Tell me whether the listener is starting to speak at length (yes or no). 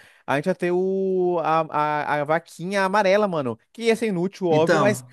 no